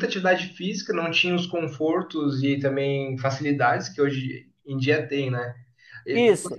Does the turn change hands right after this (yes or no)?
no